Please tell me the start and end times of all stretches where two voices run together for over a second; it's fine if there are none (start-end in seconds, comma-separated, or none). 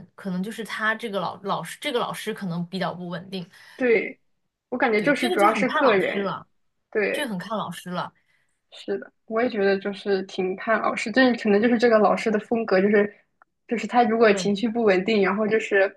5.0-6.3